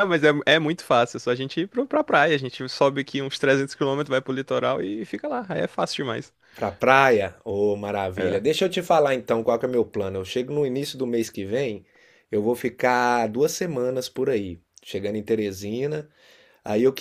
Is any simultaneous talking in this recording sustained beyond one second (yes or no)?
no